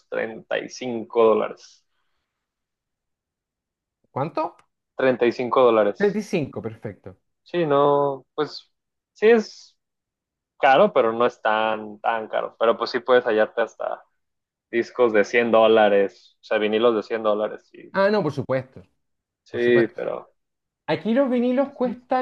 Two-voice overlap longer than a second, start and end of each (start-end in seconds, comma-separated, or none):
none